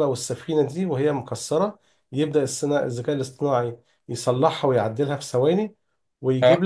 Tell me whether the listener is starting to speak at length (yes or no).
no